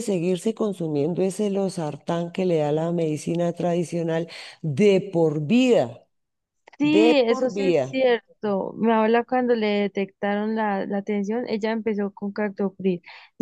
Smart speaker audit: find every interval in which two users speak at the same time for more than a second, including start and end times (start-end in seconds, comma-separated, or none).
6.8-8.0